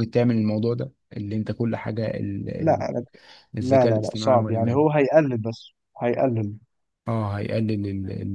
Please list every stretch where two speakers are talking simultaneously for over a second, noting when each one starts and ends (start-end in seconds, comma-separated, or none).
3.6-4.8